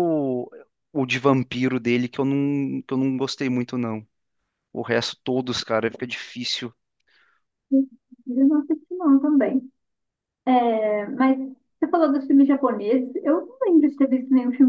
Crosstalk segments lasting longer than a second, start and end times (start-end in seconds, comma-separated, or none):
none